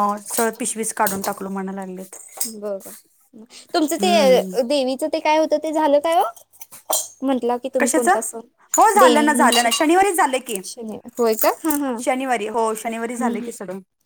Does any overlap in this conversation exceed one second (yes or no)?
yes